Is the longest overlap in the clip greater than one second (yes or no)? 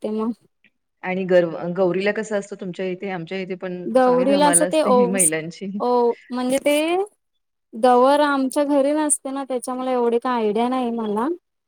yes